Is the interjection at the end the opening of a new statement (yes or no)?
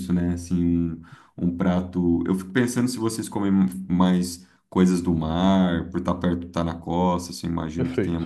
no